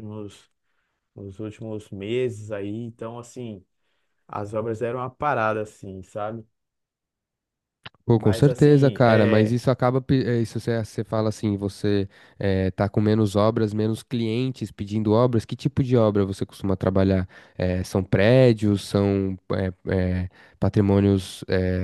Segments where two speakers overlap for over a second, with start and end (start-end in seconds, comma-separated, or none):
8.1-9.6